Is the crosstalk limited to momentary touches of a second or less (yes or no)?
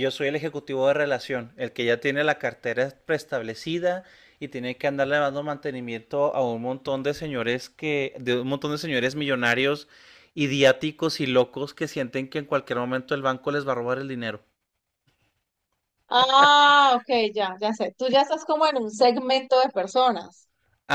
yes